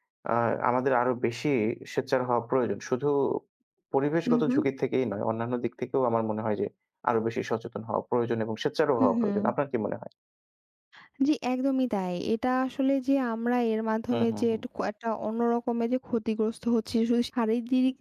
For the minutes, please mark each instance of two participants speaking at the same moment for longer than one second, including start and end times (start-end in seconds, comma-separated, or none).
none